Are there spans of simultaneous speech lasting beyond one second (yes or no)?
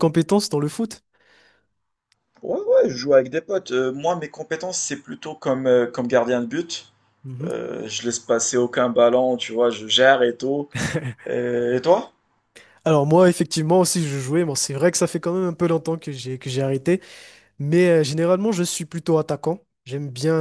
no